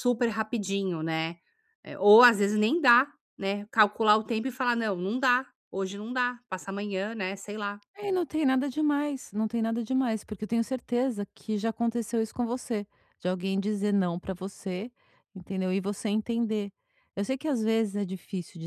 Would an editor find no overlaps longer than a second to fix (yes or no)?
yes